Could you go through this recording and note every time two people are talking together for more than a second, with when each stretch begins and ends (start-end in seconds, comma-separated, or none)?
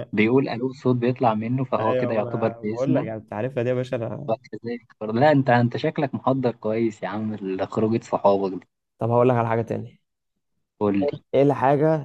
1.8-3.1